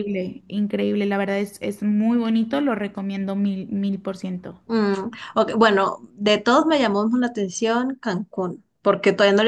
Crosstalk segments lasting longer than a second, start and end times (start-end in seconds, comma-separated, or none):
none